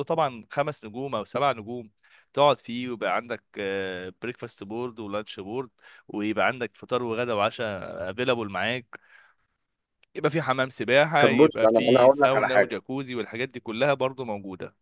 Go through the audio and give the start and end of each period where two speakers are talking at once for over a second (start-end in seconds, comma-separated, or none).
11.2-12.7